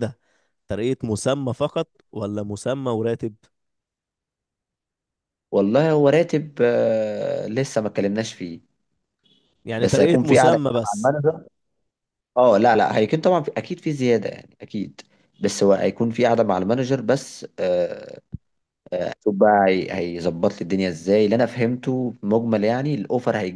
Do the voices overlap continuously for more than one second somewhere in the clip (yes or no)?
yes